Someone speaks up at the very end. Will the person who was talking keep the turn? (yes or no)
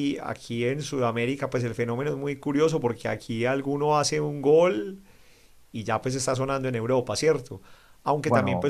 yes